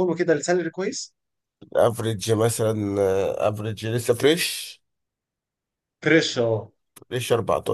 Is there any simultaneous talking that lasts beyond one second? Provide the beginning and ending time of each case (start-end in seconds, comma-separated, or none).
none